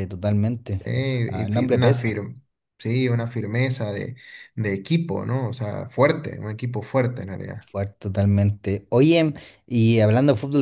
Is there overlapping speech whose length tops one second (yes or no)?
yes